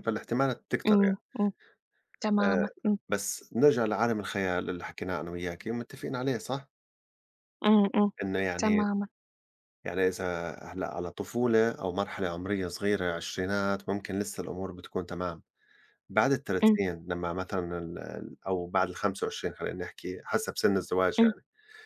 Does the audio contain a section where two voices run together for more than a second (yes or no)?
no